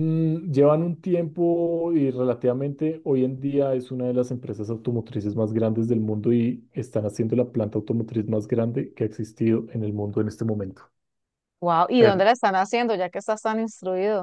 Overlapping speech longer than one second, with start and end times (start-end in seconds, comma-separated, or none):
none